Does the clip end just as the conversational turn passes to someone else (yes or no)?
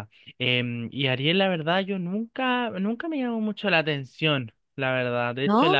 no